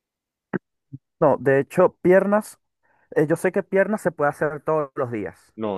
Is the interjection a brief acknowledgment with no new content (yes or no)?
no